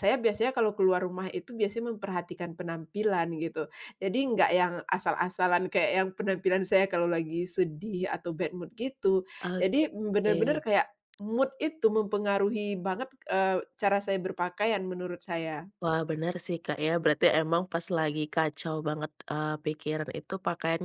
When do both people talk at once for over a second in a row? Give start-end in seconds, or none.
9.4-10.6